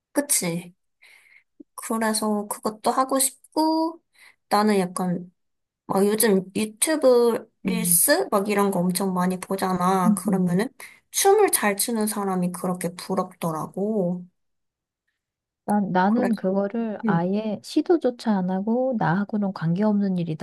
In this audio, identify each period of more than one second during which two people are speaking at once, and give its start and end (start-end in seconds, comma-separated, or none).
none